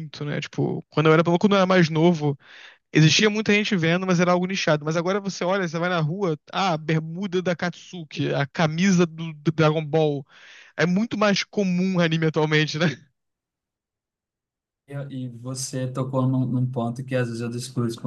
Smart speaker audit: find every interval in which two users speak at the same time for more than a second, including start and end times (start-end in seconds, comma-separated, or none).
none